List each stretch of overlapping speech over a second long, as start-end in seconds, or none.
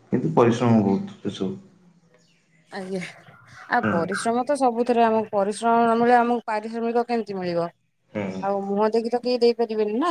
none